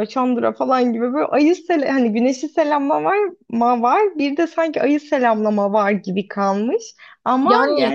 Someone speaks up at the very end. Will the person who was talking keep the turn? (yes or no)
yes